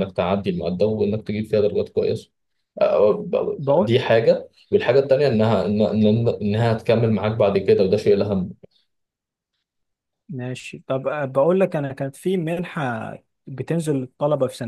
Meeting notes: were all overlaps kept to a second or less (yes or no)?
yes